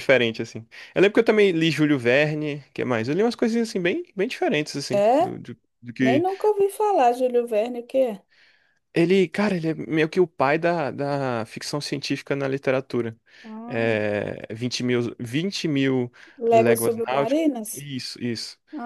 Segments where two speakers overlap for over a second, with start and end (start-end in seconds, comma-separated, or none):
16.5-17.9